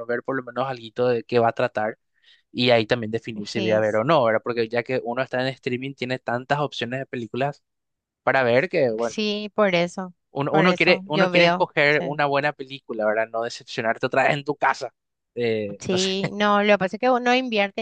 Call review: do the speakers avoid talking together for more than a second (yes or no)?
no